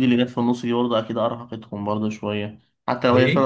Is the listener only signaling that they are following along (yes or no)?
yes